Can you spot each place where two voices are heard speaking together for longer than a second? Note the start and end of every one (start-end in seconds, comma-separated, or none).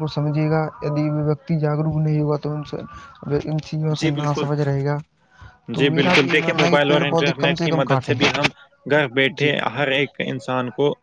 5.8-8.2